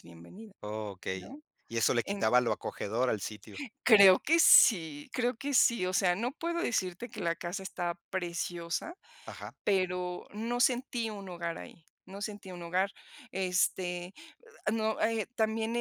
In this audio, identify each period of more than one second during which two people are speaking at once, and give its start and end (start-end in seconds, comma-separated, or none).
none